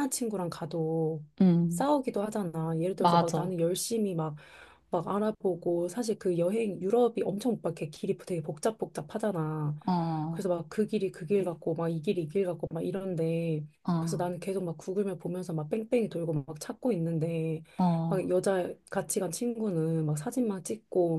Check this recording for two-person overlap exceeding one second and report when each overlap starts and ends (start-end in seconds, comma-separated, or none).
none